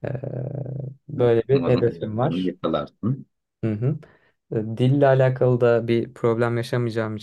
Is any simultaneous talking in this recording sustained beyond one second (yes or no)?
yes